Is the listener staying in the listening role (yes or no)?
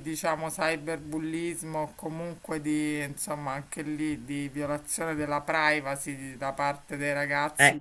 yes